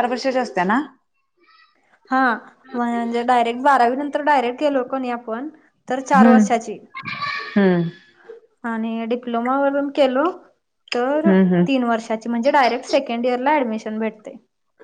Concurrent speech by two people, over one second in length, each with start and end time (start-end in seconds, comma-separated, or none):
none